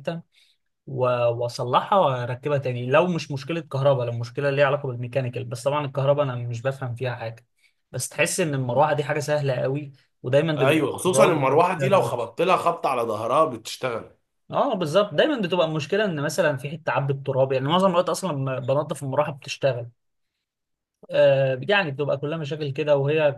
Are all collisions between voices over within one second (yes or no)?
no